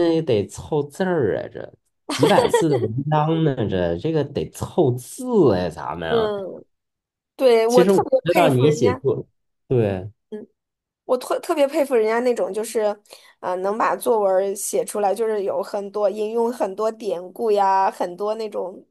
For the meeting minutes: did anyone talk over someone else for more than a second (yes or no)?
yes